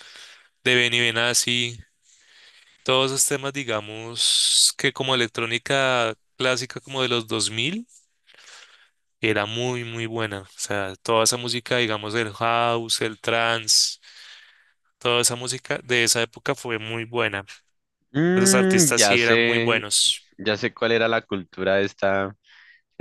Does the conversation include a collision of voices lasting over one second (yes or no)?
yes